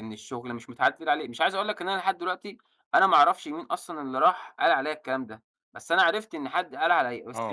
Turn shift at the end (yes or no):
yes